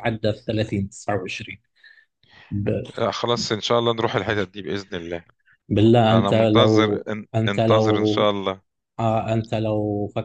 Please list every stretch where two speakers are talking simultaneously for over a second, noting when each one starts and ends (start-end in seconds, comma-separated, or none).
6.1-8.3